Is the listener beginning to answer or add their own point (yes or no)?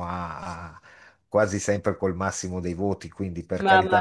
yes